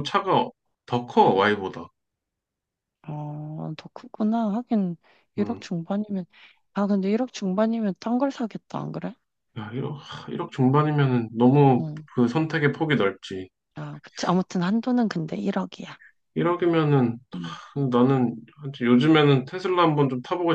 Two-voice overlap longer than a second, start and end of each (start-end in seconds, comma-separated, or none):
none